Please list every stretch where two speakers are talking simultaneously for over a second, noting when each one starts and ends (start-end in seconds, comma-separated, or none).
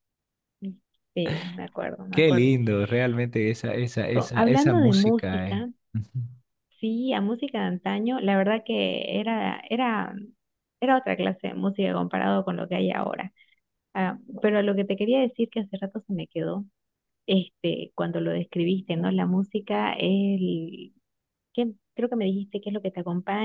4.2-5.7